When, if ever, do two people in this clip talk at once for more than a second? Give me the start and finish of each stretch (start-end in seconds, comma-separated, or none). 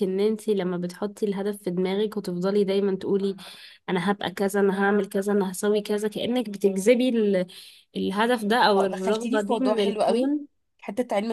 8.8-10.3